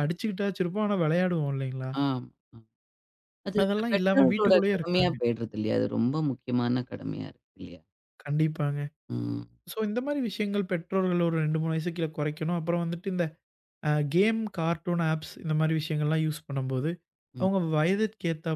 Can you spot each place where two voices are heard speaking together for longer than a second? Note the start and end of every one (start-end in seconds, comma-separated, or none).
3.6-5.2